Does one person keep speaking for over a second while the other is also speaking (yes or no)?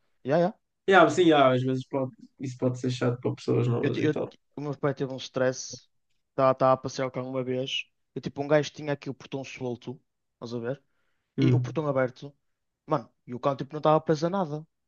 no